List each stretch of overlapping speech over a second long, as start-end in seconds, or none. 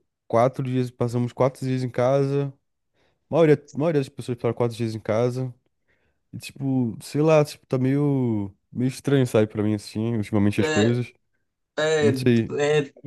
none